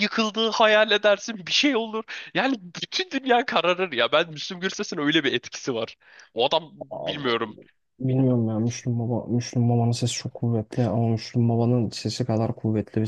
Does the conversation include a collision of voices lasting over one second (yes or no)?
no